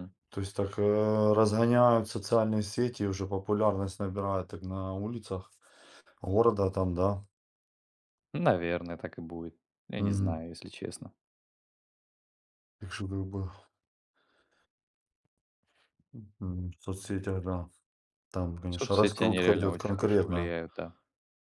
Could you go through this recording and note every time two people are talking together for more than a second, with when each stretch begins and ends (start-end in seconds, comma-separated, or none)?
18.7-20.5